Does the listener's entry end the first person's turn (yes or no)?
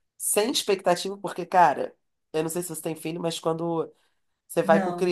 no